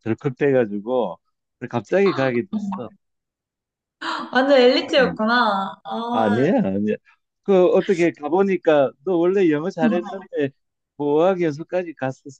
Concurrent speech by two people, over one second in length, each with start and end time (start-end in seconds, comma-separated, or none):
none